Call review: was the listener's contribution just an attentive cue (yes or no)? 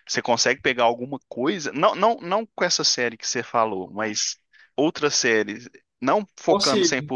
yes